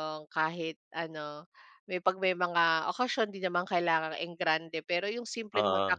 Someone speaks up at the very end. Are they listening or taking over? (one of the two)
listening